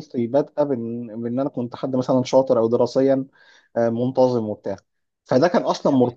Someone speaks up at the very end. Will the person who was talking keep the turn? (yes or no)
yes